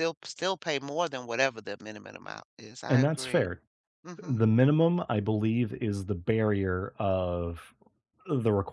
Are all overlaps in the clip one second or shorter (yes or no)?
yes